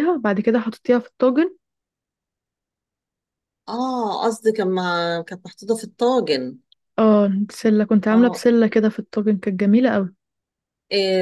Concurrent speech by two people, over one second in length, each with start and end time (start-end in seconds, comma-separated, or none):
none